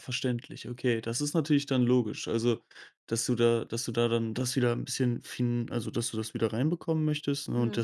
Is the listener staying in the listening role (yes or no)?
yes